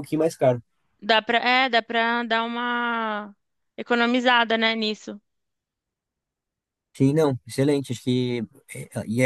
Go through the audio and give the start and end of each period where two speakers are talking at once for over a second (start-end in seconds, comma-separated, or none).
none